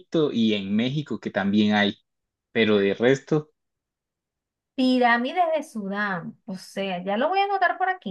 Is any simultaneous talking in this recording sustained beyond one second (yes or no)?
no